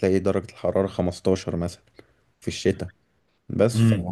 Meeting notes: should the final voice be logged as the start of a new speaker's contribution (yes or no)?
yes